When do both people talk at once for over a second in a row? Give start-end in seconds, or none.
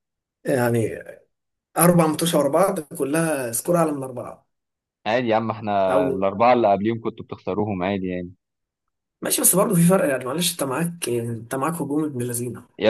none